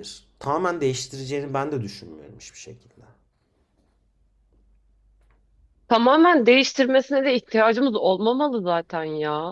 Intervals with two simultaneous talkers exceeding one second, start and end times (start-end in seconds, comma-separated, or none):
none